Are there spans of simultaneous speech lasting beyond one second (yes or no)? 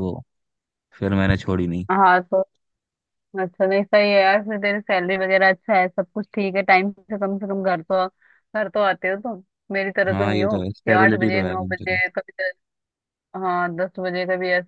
yes